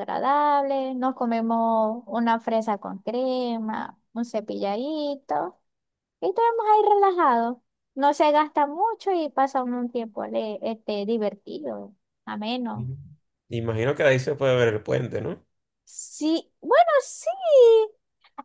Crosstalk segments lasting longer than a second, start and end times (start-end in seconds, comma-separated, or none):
none